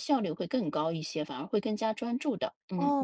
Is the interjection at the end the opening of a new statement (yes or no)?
yes